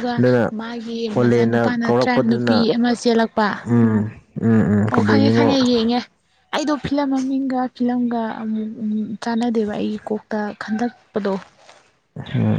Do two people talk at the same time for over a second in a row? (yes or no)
yes